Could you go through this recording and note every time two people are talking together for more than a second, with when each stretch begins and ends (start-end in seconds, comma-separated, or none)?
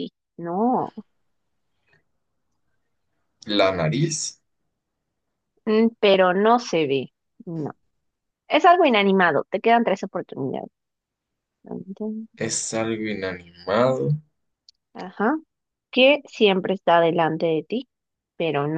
none